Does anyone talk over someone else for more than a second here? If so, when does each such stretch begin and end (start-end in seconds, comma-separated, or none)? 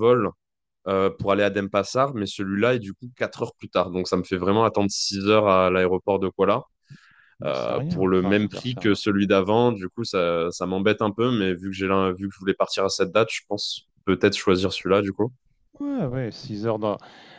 7.5-9.0